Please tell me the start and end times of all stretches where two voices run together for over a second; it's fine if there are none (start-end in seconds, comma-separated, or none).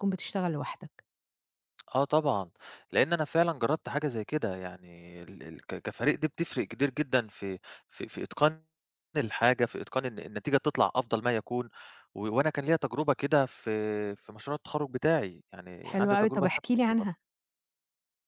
15.8-17.1